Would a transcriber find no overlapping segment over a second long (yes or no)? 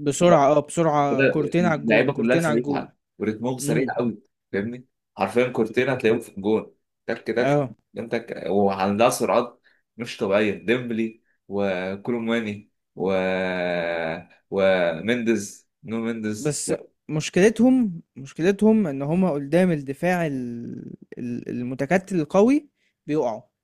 no